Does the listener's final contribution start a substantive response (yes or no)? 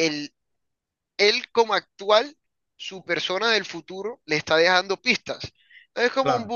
no